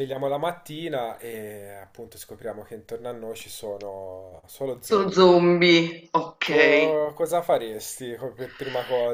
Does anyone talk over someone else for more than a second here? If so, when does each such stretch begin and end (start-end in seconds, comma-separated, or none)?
none